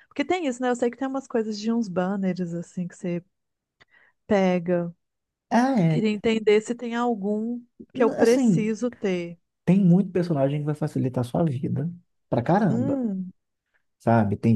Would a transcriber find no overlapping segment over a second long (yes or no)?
yes